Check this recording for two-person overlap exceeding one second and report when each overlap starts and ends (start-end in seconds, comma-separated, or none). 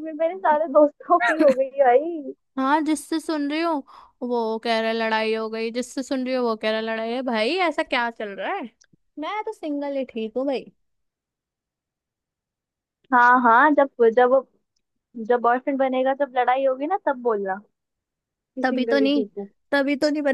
none